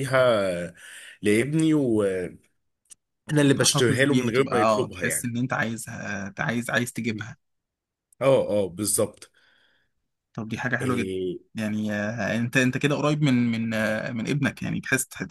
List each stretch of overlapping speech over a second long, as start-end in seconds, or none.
3.6-5.3